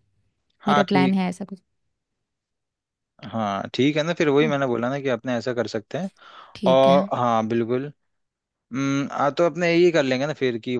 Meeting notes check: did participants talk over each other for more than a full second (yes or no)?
no